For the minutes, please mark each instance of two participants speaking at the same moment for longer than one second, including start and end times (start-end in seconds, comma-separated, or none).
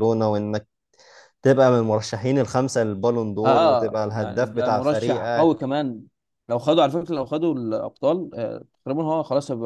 3.4-5.5